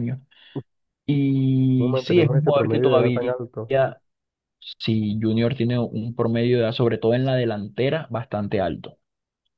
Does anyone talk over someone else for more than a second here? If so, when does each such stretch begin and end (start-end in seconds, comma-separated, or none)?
1.8-3.3